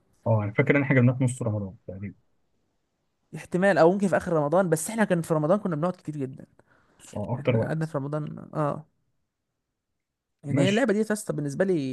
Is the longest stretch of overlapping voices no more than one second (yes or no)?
yes